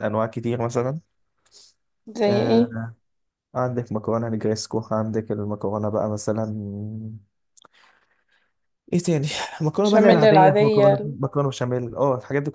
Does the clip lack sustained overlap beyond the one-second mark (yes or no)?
no